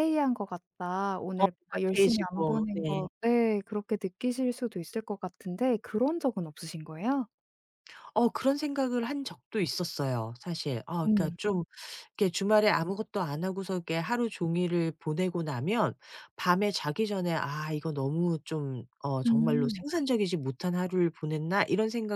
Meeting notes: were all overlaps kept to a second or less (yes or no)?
no